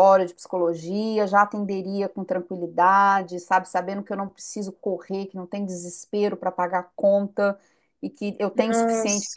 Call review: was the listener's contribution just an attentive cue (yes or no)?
yes